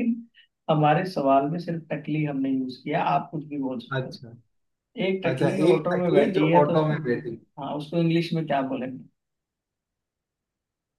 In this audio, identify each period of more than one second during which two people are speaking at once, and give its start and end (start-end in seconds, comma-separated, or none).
5.3-7.0